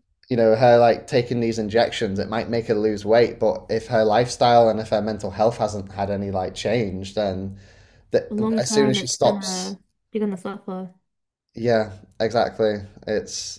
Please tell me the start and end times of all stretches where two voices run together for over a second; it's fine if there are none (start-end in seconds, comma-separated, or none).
8.3-9.8